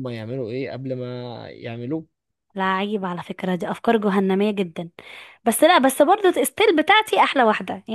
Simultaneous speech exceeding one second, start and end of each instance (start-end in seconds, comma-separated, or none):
none